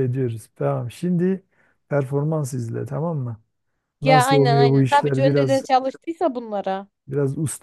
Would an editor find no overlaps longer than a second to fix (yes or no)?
no